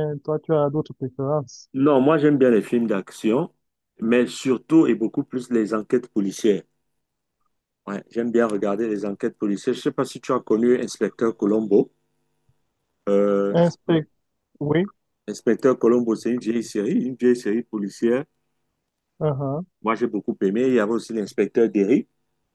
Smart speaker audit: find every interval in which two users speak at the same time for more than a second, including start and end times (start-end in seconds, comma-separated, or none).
none